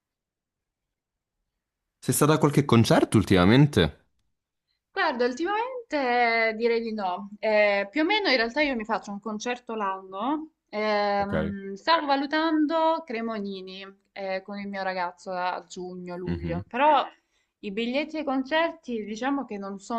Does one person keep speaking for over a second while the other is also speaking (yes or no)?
no